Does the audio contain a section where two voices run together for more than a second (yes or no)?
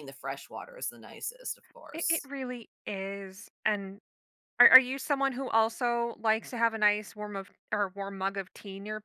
no